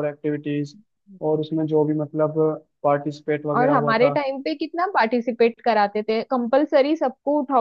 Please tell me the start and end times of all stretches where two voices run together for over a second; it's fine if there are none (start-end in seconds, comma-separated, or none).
none